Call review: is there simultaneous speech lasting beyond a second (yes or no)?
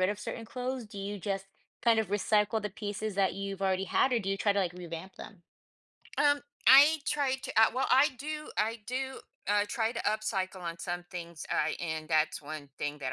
no